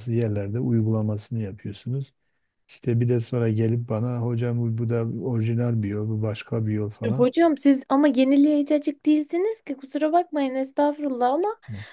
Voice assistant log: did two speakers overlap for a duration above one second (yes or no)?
no